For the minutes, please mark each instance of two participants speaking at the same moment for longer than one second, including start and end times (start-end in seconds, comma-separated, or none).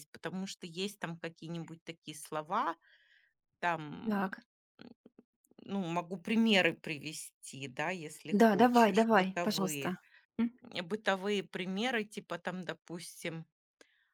8.3-9.9